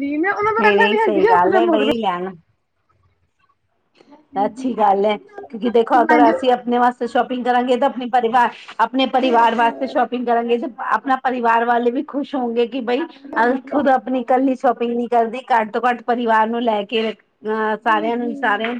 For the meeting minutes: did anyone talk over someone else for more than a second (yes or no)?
yes